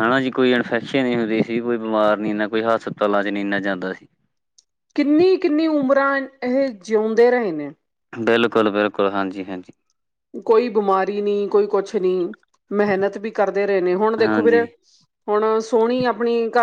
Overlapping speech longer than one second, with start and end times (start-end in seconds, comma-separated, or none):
none